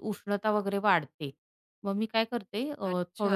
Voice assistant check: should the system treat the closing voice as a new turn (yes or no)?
no